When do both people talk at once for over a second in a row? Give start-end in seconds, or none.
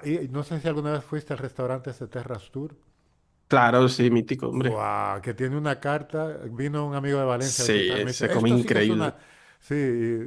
7.4-9.1